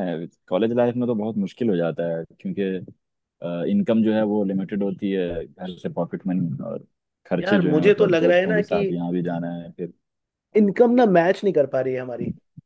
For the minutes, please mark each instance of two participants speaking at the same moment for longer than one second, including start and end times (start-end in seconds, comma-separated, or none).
7.4-8.8